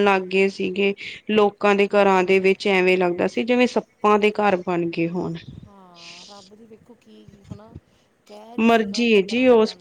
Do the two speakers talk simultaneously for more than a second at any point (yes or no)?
no